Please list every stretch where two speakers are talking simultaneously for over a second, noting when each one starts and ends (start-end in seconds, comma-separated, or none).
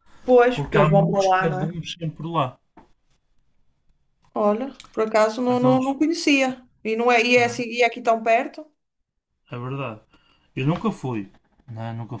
0.5-1.8